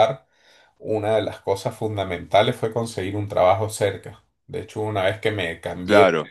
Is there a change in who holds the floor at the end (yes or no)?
no